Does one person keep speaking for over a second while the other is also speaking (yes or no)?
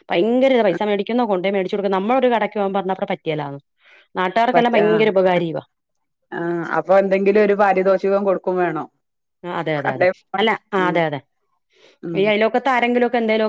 no